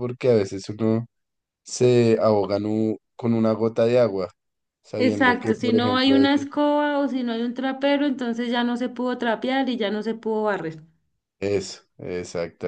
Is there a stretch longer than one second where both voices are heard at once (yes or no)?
yes